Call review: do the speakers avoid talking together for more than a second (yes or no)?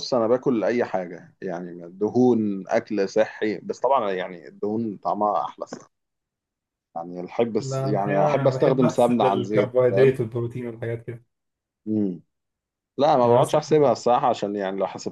no